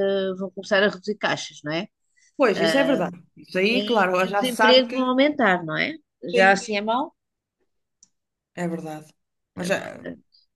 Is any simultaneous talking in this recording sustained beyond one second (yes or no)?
yes